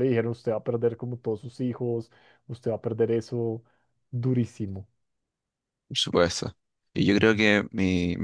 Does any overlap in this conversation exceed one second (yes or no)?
no